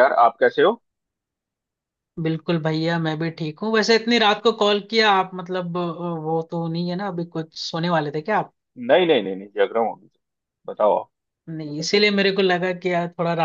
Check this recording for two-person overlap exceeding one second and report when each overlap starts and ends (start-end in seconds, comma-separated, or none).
none